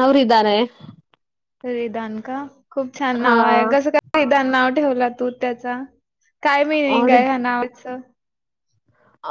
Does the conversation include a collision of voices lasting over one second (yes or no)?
no